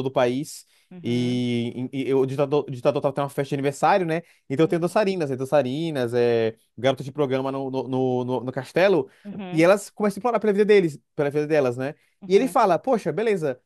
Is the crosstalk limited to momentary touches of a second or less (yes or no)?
yes